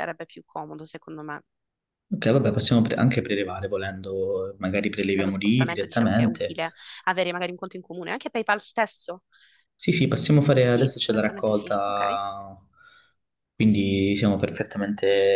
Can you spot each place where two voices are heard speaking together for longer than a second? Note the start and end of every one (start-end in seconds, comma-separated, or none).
5.0-6.6, 10.6-12.2